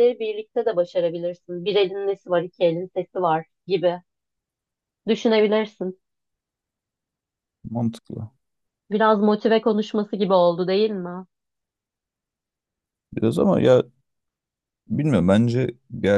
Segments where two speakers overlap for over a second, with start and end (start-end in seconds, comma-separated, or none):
none